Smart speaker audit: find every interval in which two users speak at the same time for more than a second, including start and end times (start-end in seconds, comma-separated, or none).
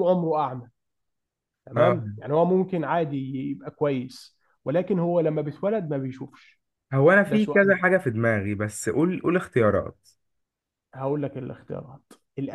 none